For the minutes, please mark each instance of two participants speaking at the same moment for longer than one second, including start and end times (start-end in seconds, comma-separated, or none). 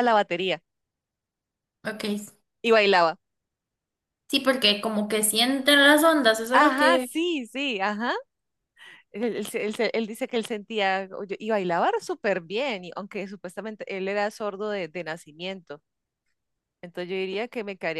none